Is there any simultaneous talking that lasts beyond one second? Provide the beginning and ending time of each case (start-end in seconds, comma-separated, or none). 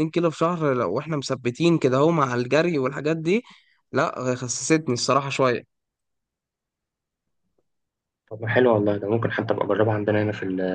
none